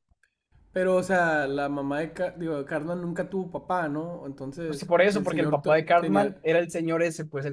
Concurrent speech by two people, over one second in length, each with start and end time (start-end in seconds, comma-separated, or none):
4.7-6.4